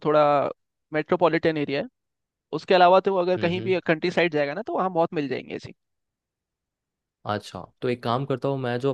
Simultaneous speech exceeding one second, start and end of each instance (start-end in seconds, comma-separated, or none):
none